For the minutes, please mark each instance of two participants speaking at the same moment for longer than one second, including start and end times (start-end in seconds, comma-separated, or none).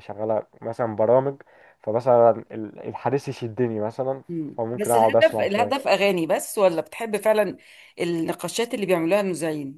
4.3-5.9